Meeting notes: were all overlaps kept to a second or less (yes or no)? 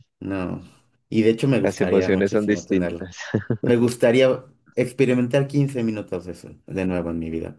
no